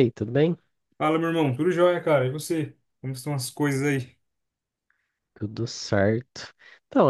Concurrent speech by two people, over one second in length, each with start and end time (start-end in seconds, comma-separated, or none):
none